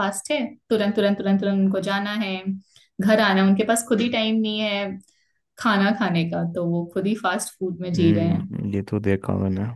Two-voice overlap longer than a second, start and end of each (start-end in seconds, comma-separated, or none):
none